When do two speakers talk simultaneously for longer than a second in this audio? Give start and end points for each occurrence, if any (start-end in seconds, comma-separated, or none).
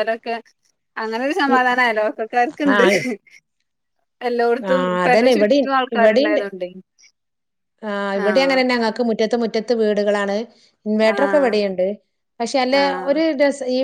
4.7-6.4